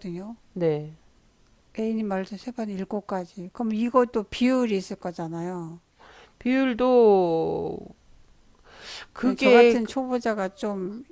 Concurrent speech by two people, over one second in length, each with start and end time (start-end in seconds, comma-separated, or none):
none